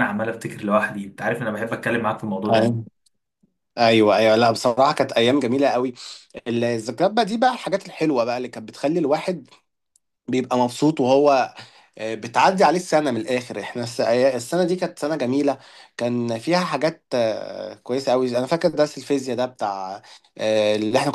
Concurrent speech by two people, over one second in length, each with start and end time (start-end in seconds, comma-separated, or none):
none